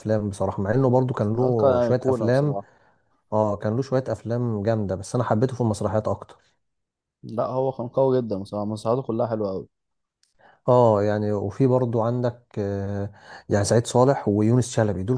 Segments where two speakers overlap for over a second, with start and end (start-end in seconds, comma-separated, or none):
1.4-2.5